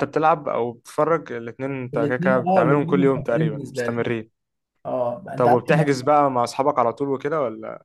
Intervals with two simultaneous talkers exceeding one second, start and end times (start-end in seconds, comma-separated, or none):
1.9-4.0